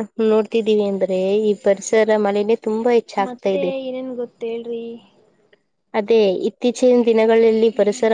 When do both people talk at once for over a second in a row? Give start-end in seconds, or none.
none